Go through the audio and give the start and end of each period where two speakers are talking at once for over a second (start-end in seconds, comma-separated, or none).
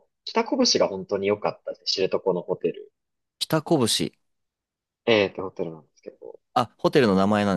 none